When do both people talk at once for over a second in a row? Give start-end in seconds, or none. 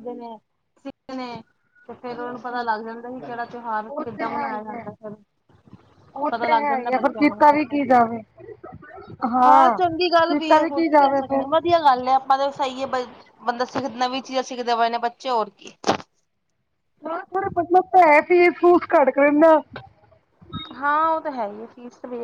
6.3-7.8